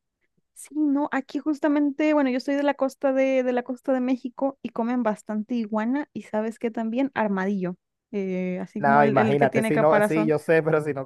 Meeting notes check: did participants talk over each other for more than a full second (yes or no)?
yes